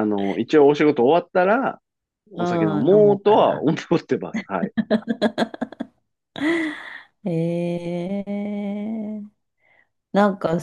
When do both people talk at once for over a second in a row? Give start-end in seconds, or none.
2.4-3.7